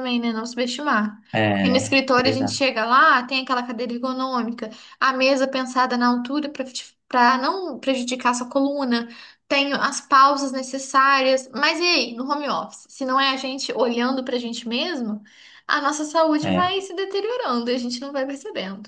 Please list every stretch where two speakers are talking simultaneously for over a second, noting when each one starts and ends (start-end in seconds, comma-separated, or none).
1.3-2.7